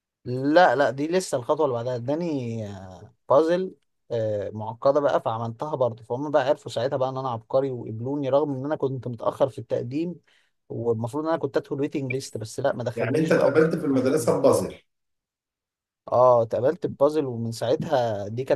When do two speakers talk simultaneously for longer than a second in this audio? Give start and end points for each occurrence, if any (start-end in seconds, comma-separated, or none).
12.9-14.3